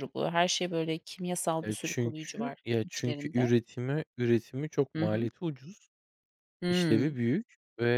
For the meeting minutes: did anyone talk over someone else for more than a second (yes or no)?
yes